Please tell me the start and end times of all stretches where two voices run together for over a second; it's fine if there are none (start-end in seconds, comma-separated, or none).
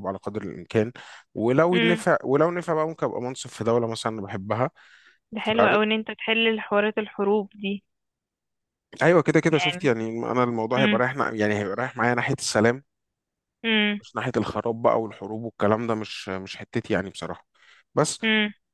none